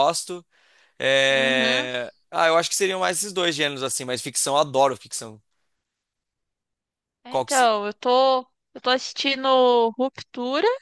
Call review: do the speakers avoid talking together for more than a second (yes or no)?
yes